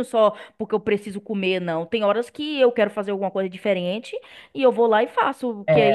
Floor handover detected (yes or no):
no